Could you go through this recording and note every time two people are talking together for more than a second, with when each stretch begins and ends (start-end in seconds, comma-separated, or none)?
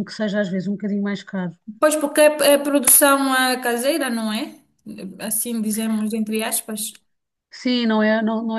none